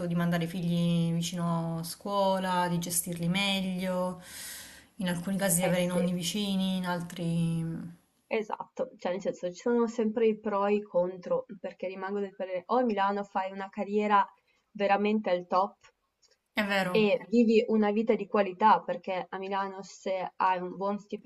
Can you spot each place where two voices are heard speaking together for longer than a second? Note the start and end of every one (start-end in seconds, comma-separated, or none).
none